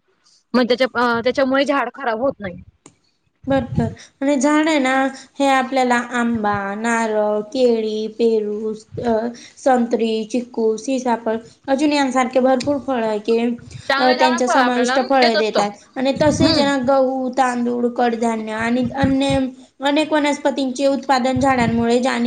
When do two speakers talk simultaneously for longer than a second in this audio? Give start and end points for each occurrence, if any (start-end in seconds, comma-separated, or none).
14.0-15.6